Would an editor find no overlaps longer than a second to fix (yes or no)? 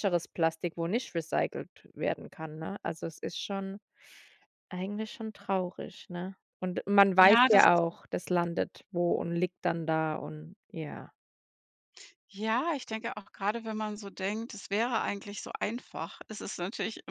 yes